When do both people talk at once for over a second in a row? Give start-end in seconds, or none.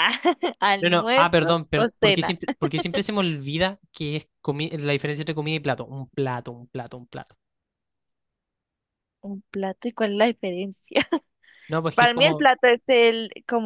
0.8-2.4